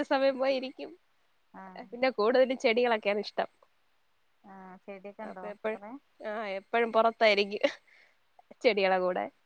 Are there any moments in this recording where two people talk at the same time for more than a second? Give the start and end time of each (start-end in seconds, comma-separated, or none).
none